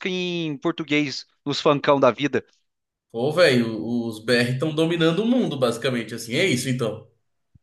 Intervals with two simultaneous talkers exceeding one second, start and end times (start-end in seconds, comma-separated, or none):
none